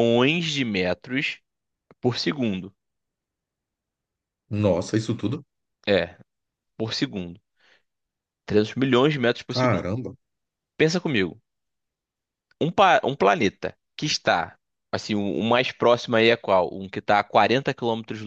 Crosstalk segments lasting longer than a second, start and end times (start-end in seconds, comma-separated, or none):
none